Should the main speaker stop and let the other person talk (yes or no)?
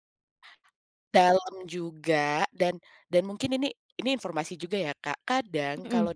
no